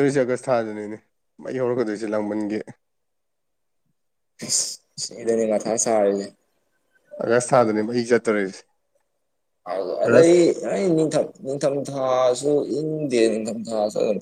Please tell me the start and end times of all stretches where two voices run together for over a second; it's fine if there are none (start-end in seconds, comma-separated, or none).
none